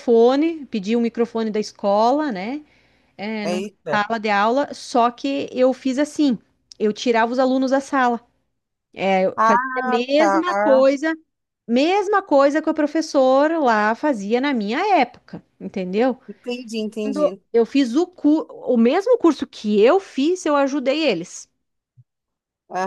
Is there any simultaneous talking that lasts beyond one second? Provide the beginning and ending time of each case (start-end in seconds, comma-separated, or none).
9.3-10.8